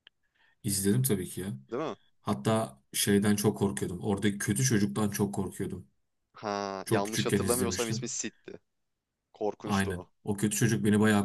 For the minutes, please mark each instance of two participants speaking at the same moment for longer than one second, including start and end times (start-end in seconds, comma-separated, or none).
6.8-8.1